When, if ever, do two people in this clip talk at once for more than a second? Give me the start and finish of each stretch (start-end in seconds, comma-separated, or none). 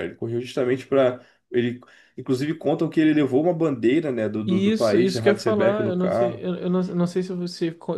4.5-6.4